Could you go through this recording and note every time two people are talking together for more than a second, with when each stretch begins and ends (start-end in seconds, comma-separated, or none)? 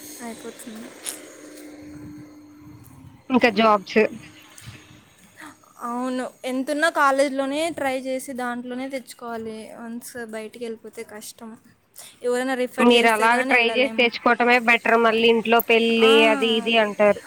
none